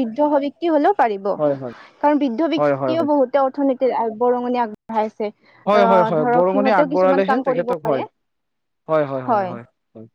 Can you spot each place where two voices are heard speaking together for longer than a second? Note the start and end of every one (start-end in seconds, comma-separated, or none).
5.8-8.0